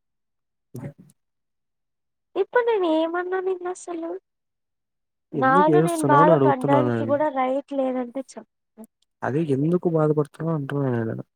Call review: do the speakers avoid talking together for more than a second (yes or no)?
no